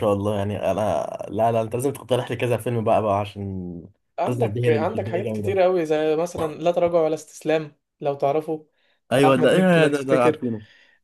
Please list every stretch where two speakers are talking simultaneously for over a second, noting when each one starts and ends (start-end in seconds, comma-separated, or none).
4.2-5.5, 9.2-10.4